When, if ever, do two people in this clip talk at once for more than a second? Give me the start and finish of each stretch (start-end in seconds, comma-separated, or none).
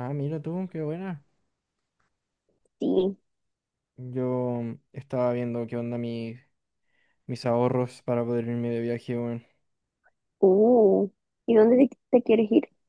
none